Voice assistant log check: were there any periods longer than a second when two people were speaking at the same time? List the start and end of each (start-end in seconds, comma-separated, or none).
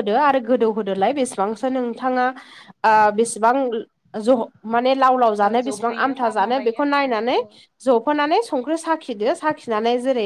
5.5-7.4